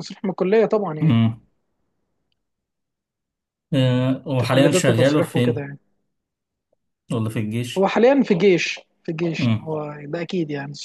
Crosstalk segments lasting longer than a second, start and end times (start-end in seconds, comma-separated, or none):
4.3-5.7